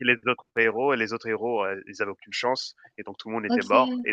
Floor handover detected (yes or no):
no